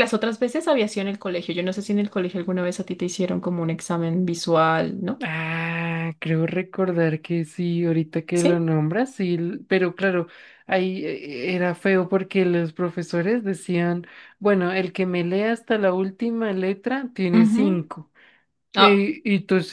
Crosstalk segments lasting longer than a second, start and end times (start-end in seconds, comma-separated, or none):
none